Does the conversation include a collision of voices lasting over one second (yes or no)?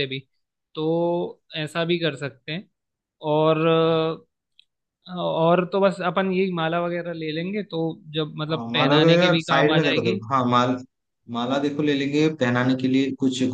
yes